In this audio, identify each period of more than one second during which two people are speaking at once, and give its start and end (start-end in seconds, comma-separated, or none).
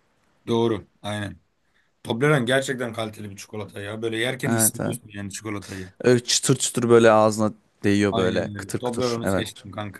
8.1-9.5